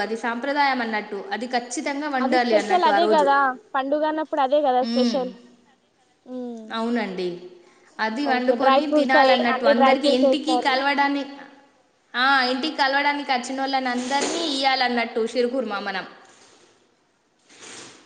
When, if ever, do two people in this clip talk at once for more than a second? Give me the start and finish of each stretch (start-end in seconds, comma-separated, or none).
8.3-10.7